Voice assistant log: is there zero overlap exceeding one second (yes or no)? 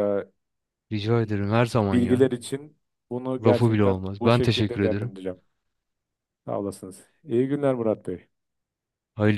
no